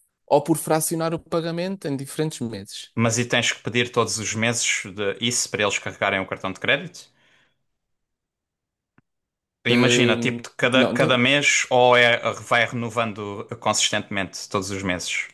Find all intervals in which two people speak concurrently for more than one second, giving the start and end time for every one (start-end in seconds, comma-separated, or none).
9.7-11.2